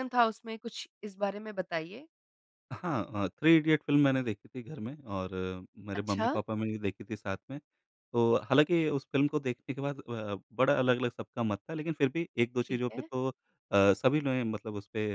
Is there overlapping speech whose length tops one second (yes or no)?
no